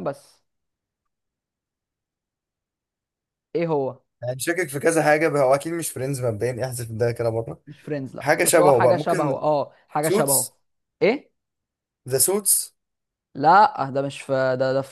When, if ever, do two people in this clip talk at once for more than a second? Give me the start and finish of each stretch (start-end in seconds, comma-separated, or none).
8.2-9.4